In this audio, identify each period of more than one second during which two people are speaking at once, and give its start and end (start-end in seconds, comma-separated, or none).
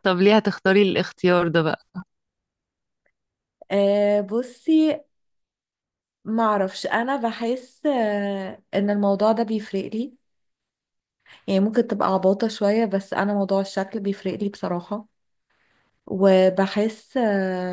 none